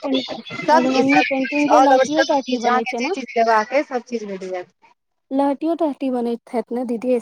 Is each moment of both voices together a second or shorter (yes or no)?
no